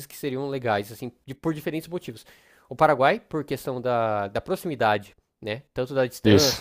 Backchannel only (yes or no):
yes